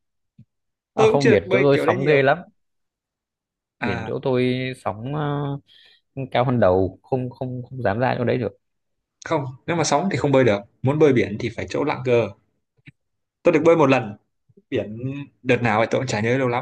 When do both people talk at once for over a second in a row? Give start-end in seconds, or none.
0.9-2.3